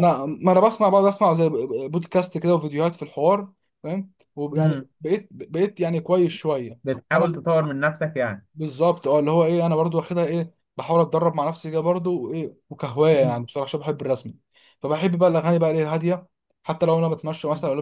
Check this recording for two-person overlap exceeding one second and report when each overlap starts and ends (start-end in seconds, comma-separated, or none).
none